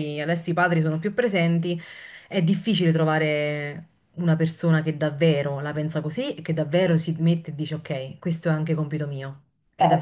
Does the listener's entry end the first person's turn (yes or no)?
yes